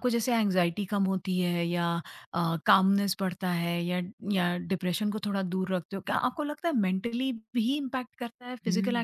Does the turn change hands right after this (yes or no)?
yes